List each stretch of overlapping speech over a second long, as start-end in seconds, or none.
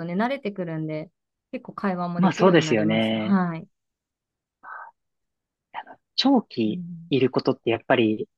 2.2-3.4